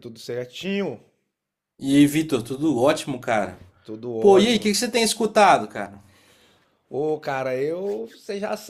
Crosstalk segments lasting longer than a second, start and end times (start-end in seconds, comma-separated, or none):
none